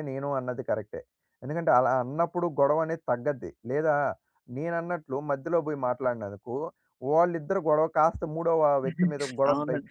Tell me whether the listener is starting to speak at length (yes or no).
yes